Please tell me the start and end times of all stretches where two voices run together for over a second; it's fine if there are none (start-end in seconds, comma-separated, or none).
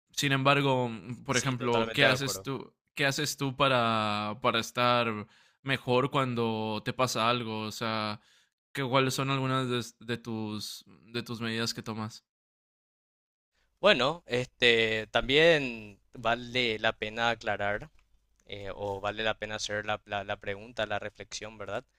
1.3-2.5